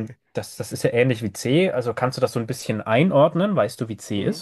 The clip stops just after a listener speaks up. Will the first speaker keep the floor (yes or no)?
no